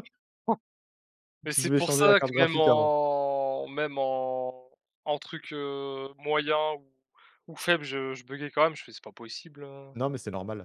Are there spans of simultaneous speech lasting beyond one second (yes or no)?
yes